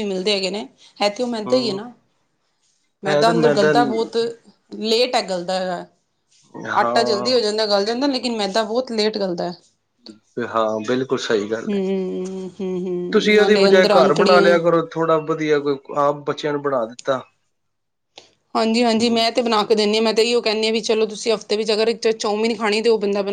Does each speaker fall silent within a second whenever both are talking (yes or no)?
no